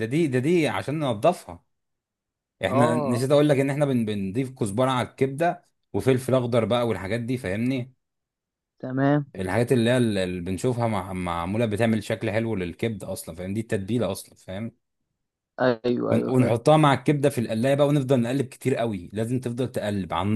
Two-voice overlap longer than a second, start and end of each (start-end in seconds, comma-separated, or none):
none